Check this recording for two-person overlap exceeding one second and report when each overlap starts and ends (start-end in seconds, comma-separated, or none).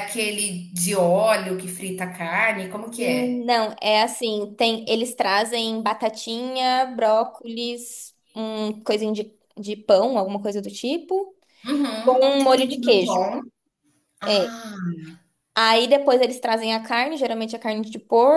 12.0-13.3